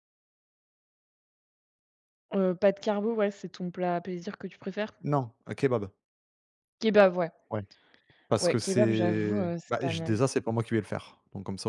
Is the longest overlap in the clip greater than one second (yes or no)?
yes